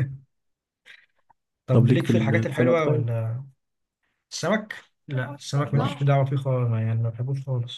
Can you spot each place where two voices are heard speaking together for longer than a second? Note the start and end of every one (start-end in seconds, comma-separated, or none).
1.7-3.1